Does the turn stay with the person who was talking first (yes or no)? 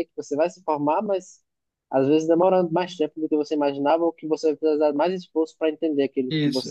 no